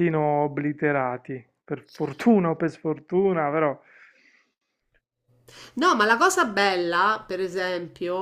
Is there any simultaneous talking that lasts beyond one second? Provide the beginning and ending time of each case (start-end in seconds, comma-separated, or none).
none